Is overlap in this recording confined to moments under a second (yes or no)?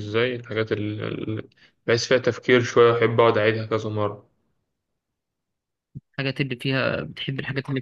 yes